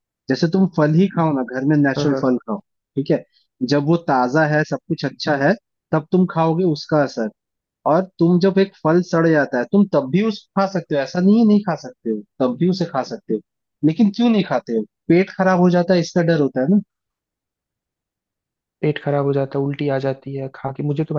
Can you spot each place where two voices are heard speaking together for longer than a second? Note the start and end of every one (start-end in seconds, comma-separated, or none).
none